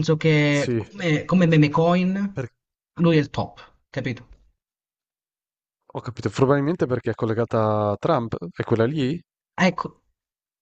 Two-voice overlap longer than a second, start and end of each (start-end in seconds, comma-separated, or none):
none